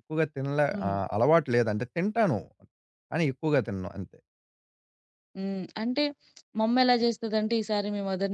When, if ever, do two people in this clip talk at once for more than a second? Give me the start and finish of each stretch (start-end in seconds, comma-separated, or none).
none